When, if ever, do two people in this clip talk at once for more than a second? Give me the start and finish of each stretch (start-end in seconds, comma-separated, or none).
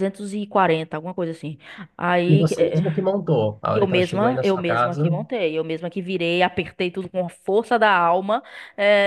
3.7-5.1